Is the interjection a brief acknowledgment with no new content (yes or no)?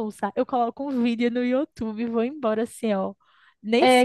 no